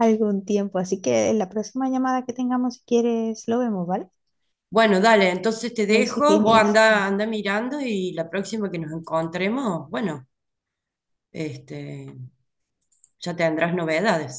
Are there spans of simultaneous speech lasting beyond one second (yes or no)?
yes